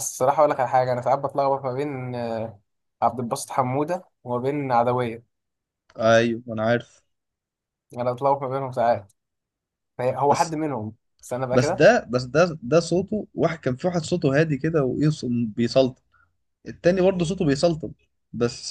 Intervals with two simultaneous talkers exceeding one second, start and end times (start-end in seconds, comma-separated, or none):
none